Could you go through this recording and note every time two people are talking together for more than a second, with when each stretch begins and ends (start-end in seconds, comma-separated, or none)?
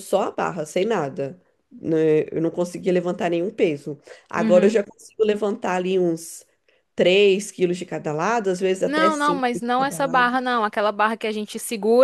8.8-10.3